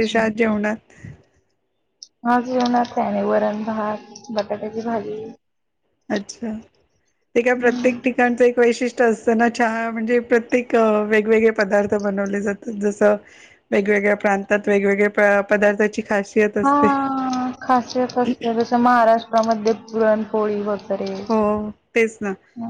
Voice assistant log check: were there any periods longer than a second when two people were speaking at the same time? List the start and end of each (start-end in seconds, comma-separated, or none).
none